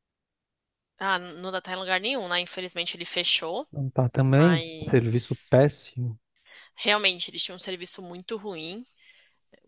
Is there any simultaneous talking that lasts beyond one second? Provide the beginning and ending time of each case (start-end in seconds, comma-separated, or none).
4.2-5.5